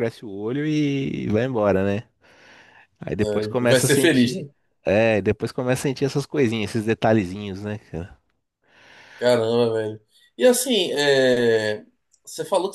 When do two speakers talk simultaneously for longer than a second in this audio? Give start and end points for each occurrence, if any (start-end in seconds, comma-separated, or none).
3.2-4.5